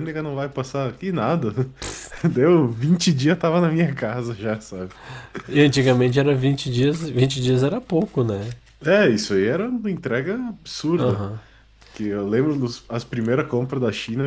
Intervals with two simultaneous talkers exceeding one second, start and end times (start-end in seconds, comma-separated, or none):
none